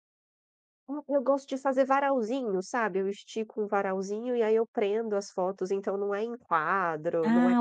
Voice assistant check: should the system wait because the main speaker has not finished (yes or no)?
no